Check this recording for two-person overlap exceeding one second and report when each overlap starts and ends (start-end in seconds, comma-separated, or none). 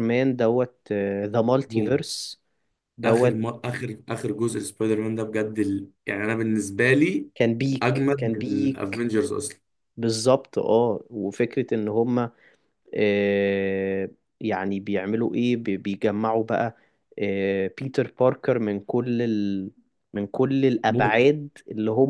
7.8-9.1